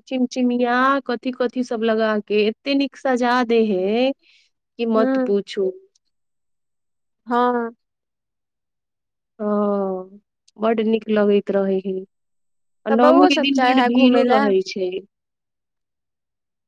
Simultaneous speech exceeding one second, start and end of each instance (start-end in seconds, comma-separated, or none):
12.9-14.5